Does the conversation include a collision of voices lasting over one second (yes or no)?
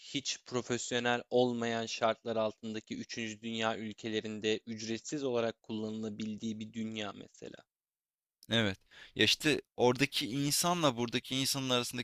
no